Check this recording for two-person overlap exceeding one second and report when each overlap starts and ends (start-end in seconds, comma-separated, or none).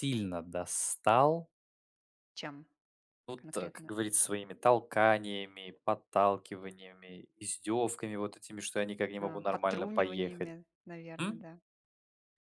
9.2-10.5